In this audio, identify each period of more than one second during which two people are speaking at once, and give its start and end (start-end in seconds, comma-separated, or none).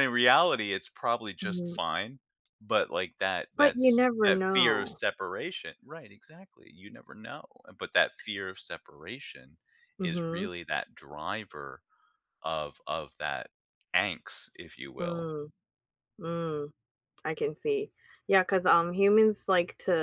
3.6-5.0